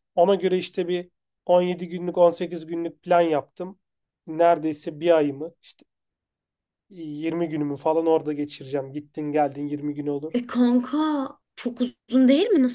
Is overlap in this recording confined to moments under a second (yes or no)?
yes